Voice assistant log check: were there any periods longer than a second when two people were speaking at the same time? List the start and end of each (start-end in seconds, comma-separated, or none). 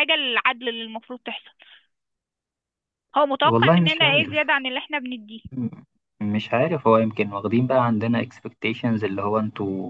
3.4-4.6